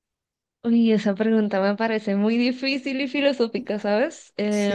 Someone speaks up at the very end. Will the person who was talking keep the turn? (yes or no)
no